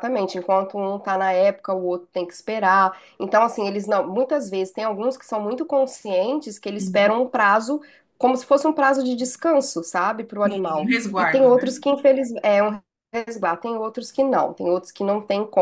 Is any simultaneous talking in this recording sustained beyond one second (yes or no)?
yes